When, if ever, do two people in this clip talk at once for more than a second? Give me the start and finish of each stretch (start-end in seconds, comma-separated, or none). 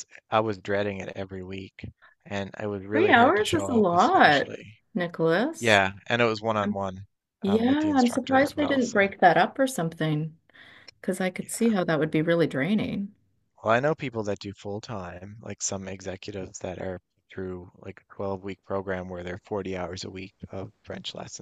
2.9-4.5, 7.5-9.1